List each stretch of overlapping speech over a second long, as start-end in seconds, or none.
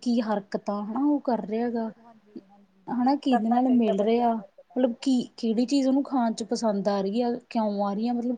1.6-5.1